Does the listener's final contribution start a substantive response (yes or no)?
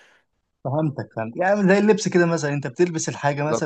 no